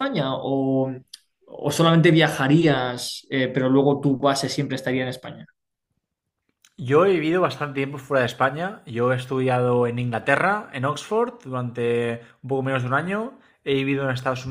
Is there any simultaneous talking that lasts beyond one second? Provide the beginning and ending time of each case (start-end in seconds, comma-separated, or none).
none